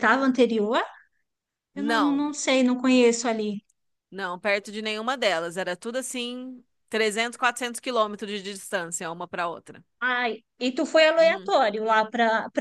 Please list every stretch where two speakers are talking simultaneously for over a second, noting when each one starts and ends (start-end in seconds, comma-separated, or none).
none